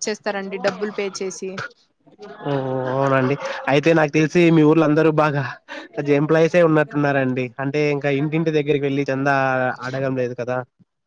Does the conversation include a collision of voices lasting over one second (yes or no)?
no